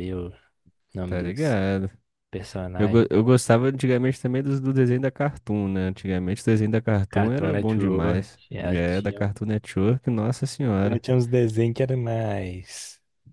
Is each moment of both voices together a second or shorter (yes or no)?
no